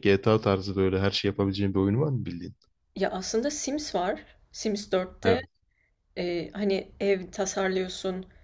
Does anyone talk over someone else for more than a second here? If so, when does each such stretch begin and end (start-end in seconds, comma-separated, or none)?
none